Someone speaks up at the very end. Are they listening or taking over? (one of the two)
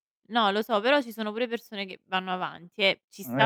listening